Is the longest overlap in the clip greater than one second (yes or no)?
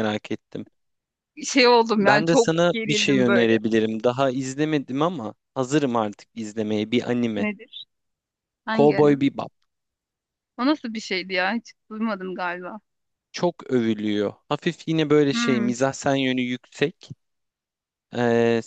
yes